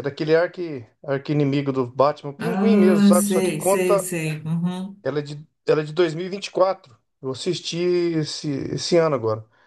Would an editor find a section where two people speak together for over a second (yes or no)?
yes